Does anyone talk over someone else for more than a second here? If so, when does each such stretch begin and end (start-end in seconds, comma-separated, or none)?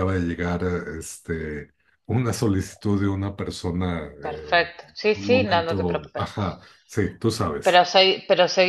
4.2-6.3